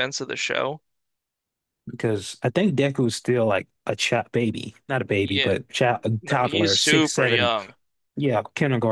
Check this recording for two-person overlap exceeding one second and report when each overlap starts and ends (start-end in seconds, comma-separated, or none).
6.2-7.5